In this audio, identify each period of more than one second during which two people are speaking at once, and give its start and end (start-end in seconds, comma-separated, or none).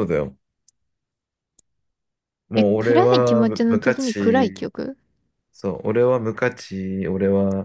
2.6-4.7